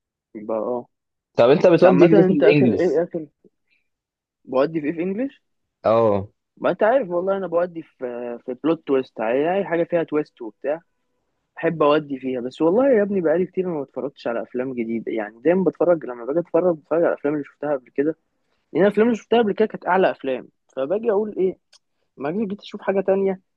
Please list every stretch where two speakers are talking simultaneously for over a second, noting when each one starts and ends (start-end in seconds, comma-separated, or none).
1.7-3.0